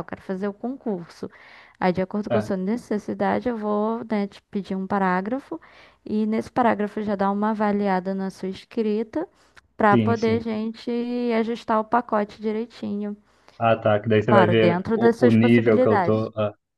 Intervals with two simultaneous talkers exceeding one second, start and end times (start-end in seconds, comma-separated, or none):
14.3-16.2